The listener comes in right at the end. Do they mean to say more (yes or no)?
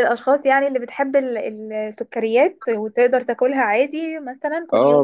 yes